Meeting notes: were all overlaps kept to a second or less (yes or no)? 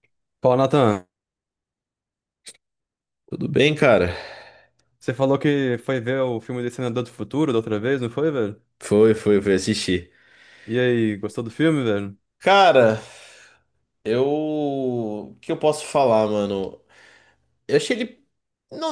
yes